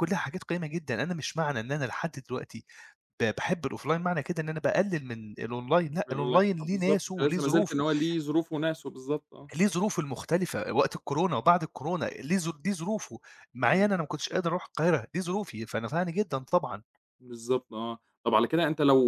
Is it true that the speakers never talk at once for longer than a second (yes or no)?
no